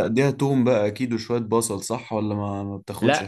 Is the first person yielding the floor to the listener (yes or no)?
yes